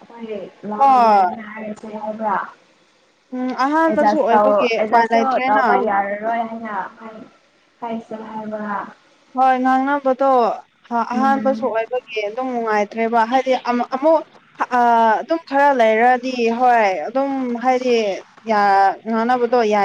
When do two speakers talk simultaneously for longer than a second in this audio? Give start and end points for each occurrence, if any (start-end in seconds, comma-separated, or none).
3.9-5.6